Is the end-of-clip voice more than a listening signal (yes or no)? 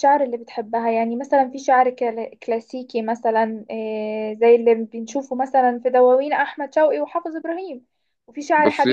no